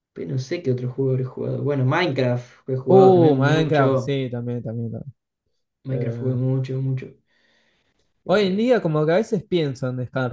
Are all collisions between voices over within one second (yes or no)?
no